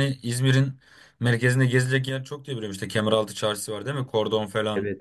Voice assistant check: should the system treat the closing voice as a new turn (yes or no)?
yes